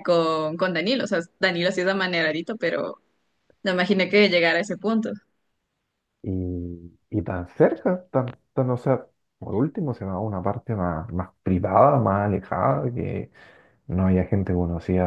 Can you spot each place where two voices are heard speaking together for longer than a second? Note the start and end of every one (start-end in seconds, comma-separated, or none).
none